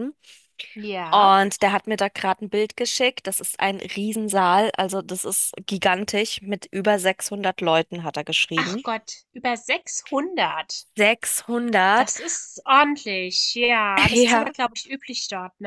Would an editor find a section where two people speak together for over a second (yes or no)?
no